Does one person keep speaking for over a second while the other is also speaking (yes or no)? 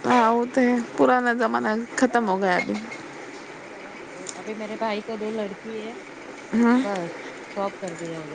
no